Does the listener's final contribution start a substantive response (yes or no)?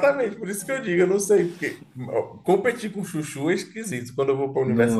no